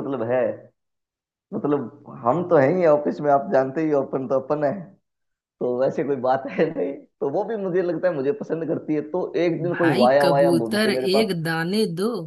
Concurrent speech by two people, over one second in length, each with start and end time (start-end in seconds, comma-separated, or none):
9.7-11.3